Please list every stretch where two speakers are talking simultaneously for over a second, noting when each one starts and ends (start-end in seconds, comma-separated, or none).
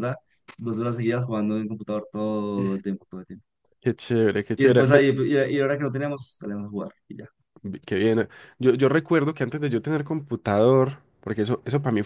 none